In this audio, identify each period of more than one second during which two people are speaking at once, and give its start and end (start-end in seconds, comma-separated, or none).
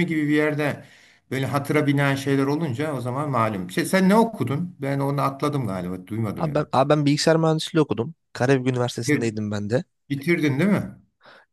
none